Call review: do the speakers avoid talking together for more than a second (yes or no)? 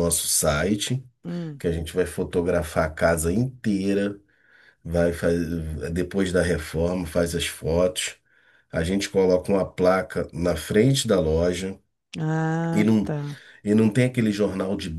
yes